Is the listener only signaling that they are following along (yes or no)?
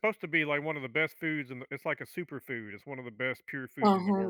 no